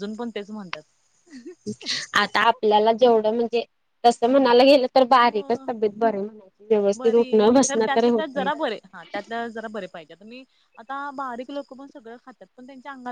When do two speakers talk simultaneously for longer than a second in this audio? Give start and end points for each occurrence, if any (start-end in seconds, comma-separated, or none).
none